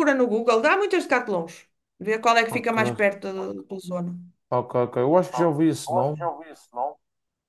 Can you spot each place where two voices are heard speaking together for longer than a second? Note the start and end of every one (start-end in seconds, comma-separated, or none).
none